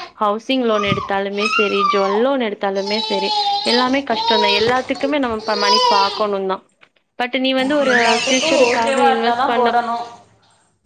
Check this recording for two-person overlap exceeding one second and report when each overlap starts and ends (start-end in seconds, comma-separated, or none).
7.8-9.7